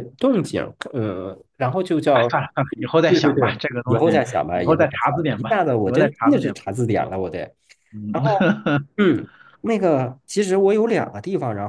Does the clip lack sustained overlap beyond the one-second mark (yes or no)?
no